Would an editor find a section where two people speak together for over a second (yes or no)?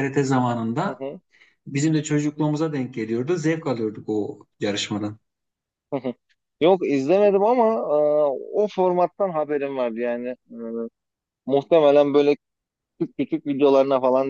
no